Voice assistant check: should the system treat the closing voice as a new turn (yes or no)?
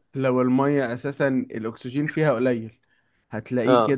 no